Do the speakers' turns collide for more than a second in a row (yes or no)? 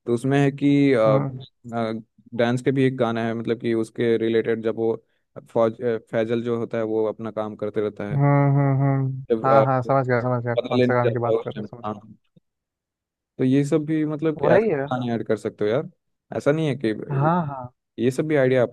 yes